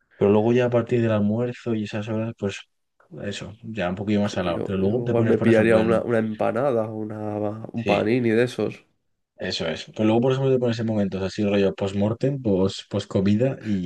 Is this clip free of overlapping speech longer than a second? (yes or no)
no